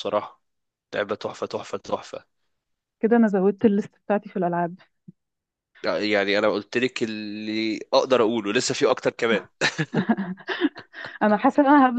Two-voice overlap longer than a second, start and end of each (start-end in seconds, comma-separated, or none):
none